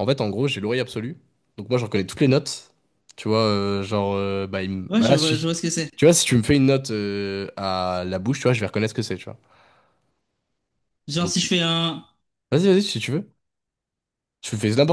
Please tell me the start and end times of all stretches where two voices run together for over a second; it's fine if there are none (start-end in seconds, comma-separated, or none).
none